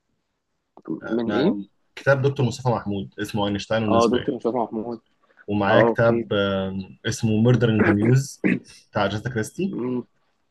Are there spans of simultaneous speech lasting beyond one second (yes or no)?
no